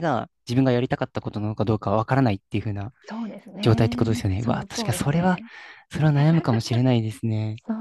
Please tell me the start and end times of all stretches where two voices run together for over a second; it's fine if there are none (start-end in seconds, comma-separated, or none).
3.6-5.4